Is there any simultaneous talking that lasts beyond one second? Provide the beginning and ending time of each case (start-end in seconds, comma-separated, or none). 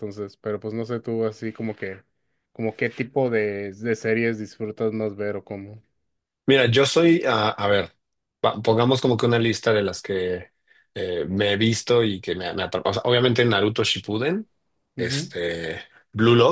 none